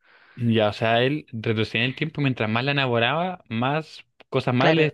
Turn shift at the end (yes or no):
yes